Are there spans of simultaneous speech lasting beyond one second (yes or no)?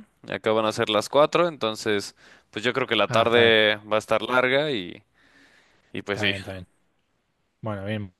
no